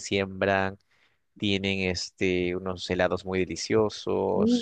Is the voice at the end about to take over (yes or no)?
yes